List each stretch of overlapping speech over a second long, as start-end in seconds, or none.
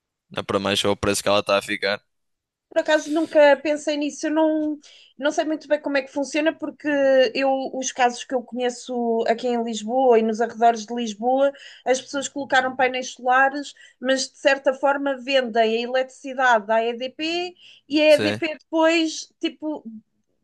none